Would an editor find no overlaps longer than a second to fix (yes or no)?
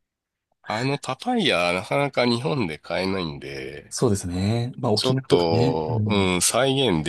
no